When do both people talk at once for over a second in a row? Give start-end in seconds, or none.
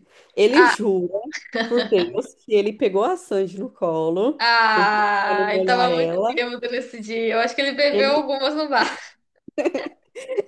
4.4-6.3